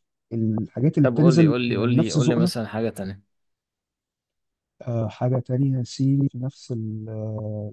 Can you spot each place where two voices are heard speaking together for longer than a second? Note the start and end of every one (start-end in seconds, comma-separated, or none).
1.0-2.5